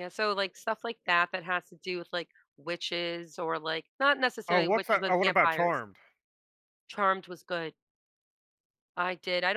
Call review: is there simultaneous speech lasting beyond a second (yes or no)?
yes